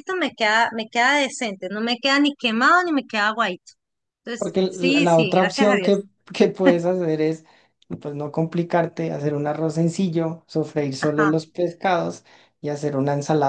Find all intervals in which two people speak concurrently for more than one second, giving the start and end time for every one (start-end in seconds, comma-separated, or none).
4.4-5.9